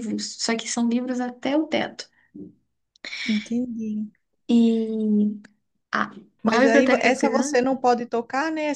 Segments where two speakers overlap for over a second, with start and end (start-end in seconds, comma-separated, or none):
6.5-7.8